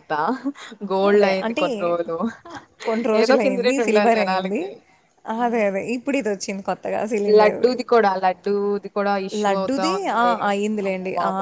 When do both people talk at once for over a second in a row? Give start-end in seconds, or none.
3.2-4.6